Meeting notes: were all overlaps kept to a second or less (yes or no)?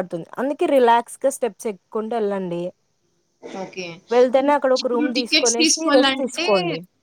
no